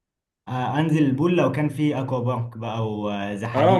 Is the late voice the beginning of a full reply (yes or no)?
yes